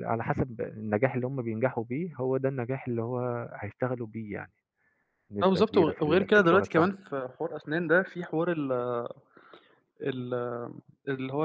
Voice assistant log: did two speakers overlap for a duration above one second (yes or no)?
yes